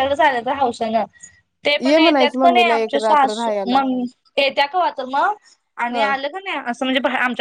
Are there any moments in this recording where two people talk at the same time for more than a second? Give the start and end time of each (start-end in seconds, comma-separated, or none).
1.9-3.8